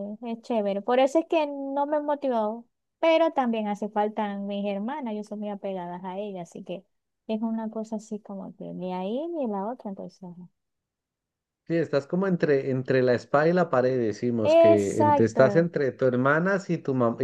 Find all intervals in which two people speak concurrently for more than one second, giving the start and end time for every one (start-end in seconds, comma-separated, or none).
14.4-15.7